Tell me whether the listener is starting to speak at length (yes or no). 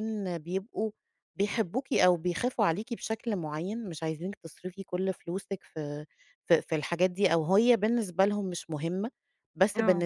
no